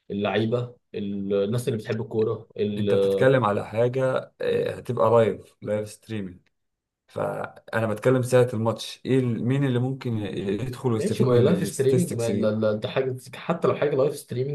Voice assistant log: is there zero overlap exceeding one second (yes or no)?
no